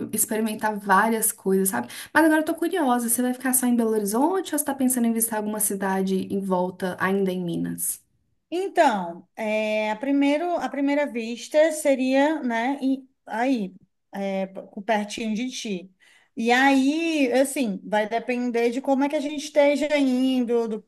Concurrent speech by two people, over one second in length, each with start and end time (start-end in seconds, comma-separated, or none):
none